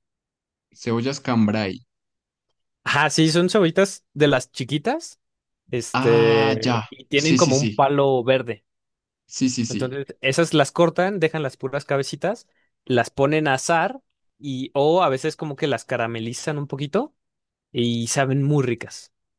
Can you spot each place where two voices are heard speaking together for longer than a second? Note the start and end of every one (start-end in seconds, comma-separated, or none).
5.9-7.8